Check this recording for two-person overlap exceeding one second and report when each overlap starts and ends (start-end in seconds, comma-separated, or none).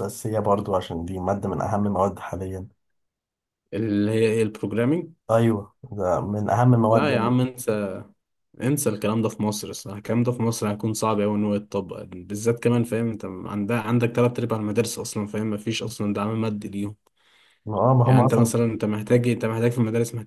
none